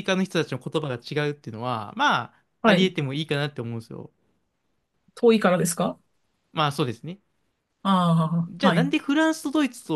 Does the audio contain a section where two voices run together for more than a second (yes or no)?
no